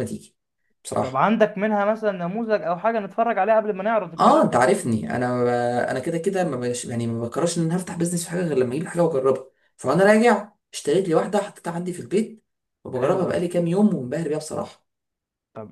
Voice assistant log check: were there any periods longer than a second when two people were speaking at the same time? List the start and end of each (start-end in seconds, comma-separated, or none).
none